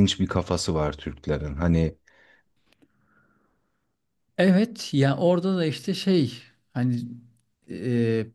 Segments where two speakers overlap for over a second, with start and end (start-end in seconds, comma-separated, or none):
none